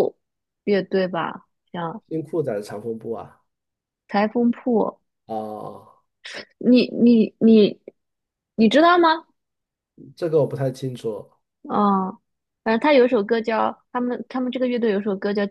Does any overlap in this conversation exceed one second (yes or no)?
no